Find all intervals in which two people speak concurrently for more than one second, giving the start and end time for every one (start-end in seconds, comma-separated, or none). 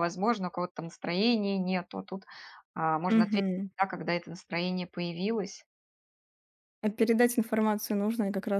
none